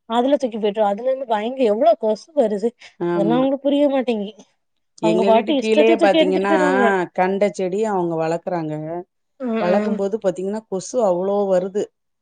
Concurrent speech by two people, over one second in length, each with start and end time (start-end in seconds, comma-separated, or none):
5.1-6.5